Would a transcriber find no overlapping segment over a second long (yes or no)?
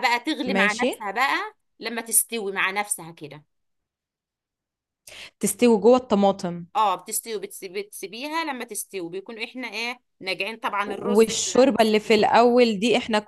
no